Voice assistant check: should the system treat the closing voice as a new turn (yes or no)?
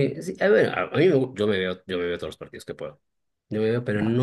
no